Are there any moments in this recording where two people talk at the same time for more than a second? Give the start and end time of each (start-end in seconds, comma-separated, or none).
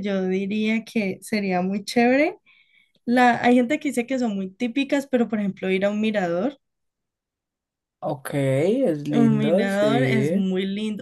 9.1-10.4